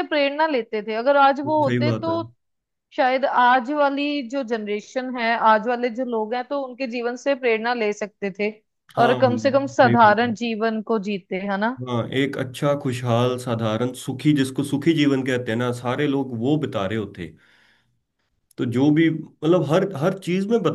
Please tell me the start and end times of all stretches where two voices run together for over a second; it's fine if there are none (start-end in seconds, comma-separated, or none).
9.0-10.3